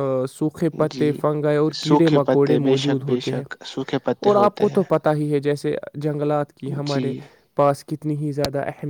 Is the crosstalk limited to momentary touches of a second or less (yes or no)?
no